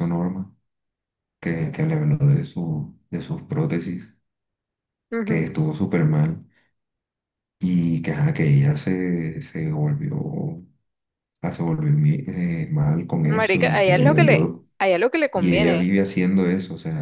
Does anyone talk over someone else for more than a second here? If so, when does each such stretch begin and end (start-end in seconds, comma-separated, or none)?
13.2-14.7